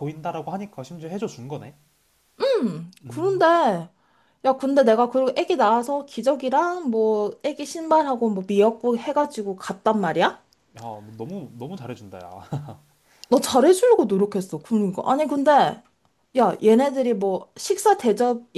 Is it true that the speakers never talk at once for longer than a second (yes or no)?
yes